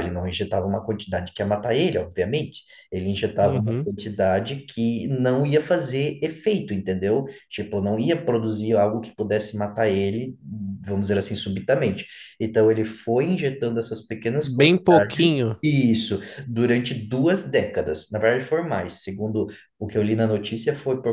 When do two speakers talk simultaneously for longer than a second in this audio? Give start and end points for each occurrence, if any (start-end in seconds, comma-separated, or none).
14.4-15.6